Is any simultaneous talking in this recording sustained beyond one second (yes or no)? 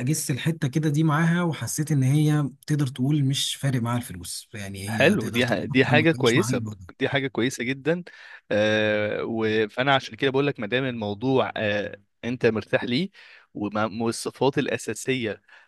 yes